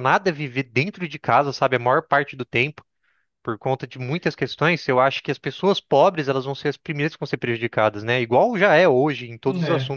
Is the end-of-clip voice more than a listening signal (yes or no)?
no